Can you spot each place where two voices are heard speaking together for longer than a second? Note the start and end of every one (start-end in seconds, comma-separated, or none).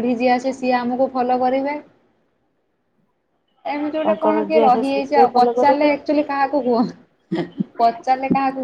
4.0-5.9